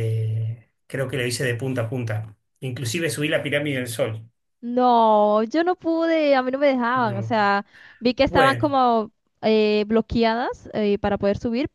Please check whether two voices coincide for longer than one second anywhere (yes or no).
no